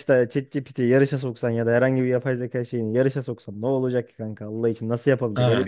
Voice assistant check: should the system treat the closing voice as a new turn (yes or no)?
yes